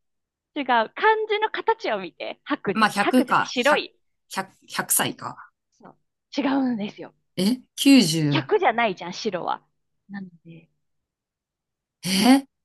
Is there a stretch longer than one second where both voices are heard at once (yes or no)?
yes